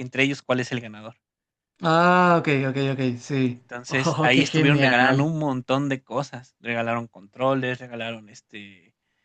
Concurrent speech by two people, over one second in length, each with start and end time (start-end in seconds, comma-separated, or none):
3.5-5.3